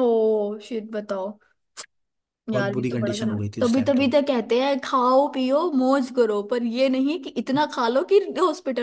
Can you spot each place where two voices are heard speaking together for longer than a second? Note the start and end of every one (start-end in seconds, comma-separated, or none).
2.5-4.1